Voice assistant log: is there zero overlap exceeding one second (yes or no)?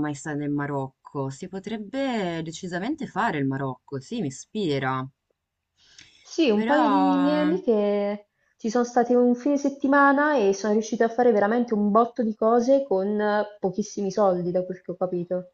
yes